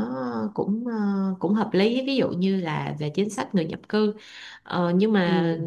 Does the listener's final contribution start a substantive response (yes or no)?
no